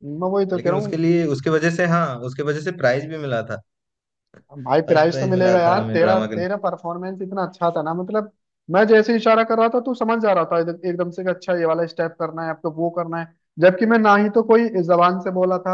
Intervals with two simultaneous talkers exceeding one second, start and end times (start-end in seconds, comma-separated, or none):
4.9-6.5